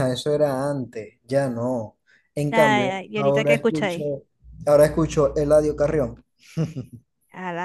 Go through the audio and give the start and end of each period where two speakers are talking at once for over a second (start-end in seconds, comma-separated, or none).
2.5-4.0